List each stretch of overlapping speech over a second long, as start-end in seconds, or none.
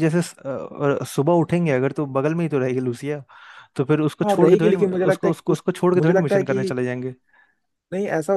4.3-6.7